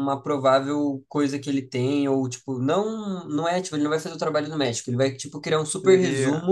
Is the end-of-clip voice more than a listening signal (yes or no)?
no